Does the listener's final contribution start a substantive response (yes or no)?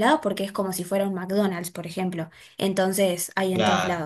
yes